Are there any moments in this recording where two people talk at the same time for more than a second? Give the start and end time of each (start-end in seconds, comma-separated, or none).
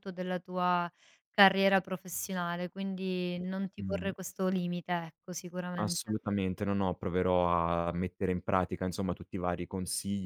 none